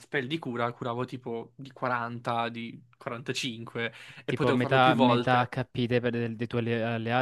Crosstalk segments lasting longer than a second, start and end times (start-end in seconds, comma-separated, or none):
4.2-5.5